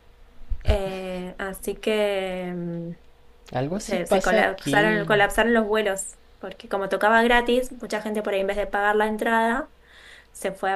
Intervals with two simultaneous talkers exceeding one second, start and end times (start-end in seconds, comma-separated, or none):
3.8-5.1